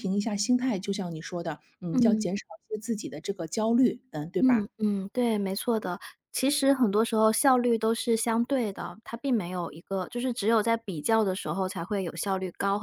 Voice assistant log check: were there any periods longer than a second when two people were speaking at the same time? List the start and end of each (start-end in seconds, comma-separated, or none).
none